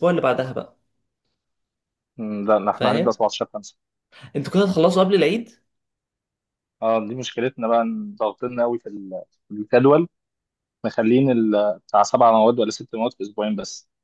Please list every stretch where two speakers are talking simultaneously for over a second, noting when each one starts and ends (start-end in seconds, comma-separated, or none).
none